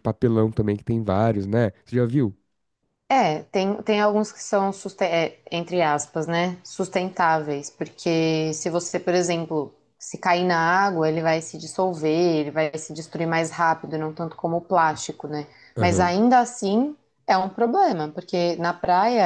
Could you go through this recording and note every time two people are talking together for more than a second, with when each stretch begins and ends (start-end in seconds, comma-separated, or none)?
none